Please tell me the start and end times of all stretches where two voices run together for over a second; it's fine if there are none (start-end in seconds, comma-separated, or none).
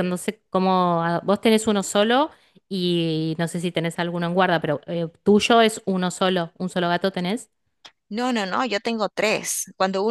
none